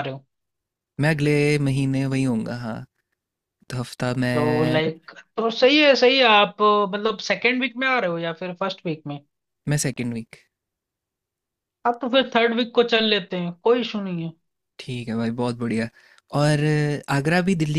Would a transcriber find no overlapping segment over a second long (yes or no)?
yes